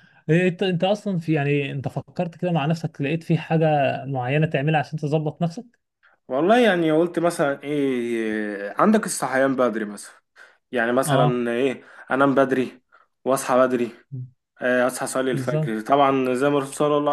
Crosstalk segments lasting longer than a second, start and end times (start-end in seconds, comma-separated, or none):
none